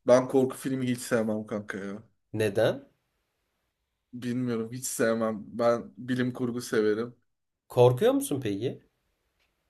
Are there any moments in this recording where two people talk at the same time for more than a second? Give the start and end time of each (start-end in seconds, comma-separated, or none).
none